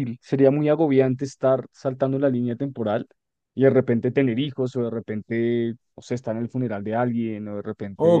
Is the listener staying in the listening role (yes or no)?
no